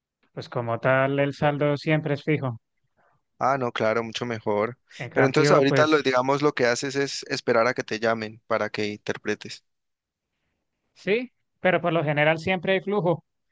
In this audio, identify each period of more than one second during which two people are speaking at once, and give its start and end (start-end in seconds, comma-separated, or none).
5.0-6.2